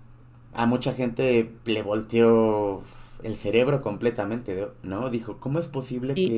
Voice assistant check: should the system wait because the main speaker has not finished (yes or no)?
yes